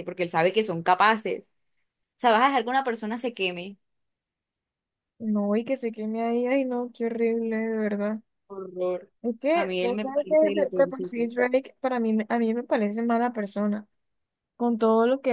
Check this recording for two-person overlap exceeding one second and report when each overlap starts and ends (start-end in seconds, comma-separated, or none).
9.5-11.2